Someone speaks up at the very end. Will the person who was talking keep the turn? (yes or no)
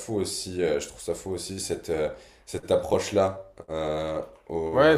no